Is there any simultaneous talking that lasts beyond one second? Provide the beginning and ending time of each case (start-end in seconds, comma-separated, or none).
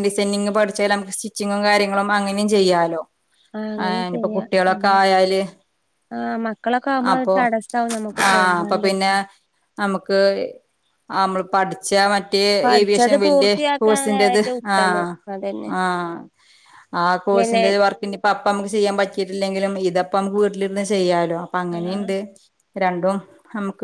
12.6-14.8